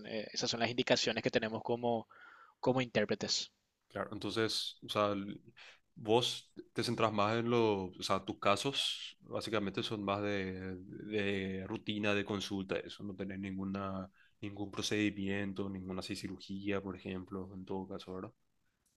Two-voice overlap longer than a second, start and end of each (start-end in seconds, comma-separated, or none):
none